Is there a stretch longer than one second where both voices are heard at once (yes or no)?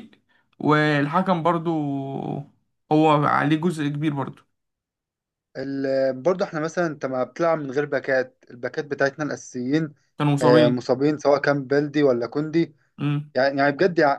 no